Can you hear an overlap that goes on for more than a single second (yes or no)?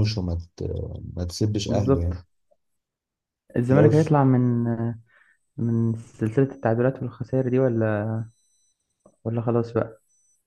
no